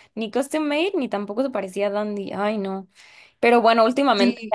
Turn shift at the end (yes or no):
no